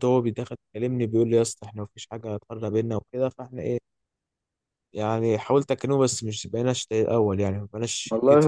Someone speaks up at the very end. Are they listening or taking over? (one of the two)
taking over